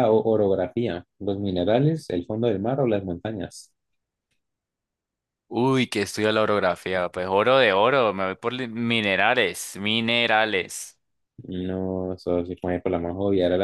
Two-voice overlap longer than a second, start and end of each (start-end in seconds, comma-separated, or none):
none